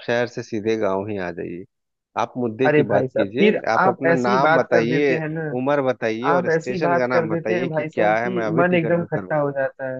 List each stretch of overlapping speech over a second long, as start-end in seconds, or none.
2.7-5.2, 6.3-9.3